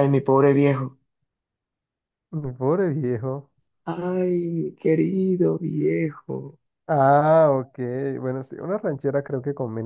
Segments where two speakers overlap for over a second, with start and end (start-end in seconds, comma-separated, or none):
none